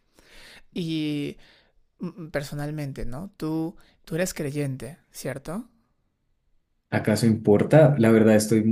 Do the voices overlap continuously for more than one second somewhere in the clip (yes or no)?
no